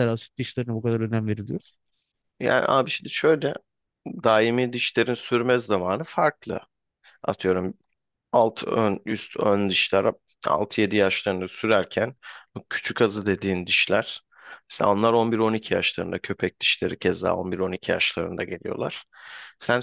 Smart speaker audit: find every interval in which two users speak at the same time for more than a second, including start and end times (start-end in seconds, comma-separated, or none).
none